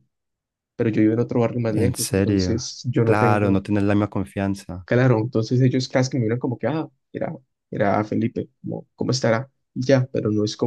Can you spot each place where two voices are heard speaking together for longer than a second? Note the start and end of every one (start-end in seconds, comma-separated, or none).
1.6-3.6